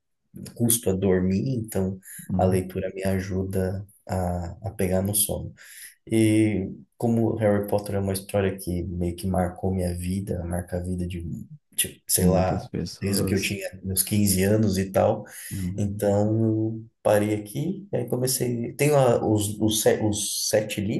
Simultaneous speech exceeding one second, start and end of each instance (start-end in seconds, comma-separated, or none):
12.2-13.6